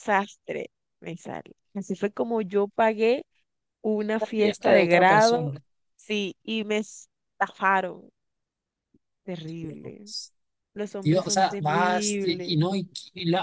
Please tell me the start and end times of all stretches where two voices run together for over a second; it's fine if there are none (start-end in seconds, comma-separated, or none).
4.2-5.5, 11.0-12.6